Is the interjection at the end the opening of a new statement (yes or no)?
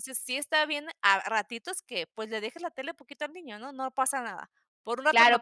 yes